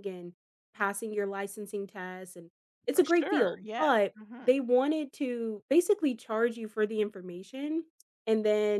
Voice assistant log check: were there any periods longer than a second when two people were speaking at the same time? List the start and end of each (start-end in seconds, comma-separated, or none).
2.9-4.5